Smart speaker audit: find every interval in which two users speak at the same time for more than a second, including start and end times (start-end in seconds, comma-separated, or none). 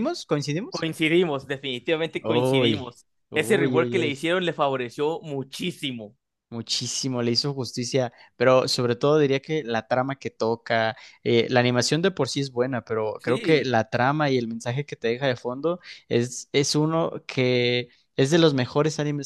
2.2-4.2